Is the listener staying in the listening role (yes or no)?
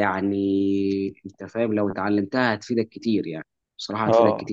no